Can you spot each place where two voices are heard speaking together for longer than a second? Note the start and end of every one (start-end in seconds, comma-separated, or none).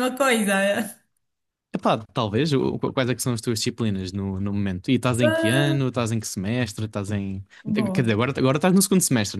none